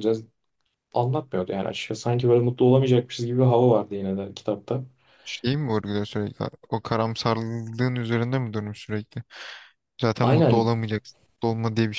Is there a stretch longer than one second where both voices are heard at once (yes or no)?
no